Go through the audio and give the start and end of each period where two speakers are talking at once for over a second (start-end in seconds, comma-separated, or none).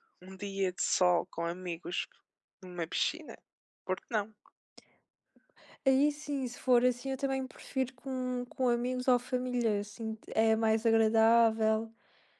none